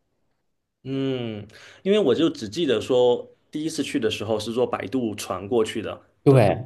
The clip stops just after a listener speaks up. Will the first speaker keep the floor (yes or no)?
yes